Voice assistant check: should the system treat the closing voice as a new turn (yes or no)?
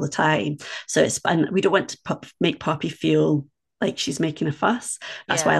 no